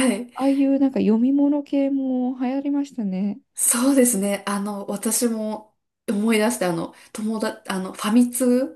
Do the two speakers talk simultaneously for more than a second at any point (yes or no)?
no